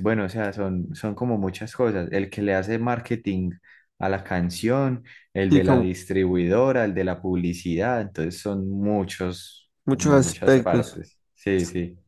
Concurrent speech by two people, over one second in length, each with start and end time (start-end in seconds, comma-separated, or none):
9.8-11.0